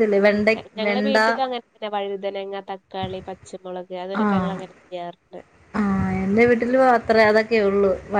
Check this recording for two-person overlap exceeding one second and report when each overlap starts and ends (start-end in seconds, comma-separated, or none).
none